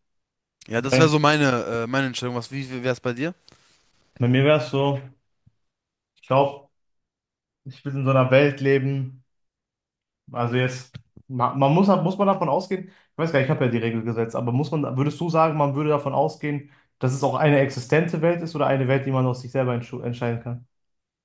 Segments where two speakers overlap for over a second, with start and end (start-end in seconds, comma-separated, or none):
none